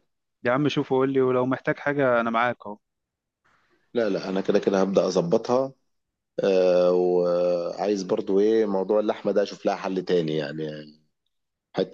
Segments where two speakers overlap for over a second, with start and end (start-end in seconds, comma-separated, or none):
none